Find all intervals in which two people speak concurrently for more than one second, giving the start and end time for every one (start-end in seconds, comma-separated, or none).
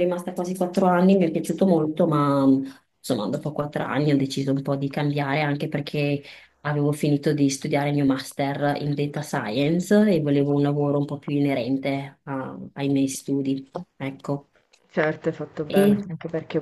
none